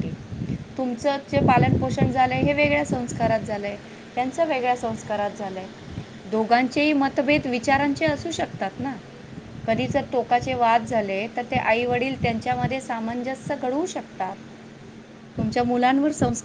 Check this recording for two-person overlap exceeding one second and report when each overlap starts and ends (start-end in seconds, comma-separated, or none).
none